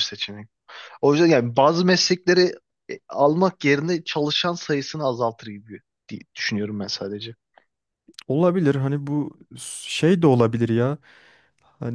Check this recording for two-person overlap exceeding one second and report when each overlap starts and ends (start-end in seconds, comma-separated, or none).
none